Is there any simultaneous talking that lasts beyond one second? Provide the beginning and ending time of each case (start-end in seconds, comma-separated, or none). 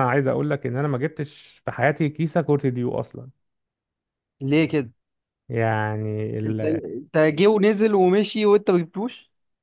none